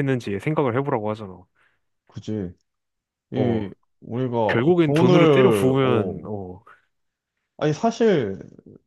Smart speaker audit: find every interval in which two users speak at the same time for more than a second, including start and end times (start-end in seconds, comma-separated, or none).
4.5-6.3